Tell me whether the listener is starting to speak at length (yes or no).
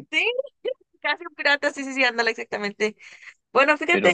no